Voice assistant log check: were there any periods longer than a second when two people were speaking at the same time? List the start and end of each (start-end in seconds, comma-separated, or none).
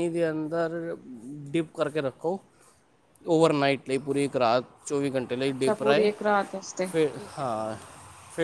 none